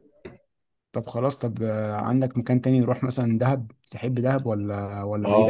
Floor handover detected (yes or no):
yes